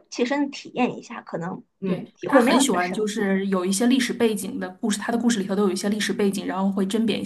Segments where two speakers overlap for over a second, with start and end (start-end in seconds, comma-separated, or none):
1.9-3.3